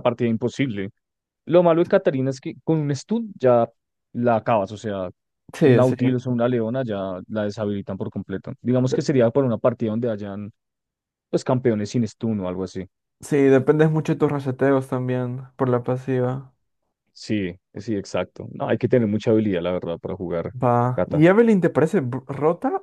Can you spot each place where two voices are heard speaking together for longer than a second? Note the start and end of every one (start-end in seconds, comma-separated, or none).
none